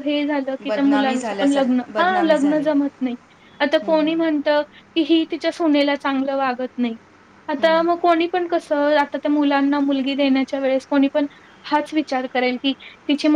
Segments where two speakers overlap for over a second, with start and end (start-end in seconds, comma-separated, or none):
0.7-2.6